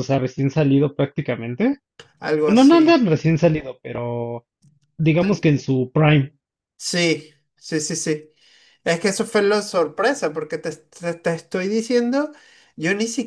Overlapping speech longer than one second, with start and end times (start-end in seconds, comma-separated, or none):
none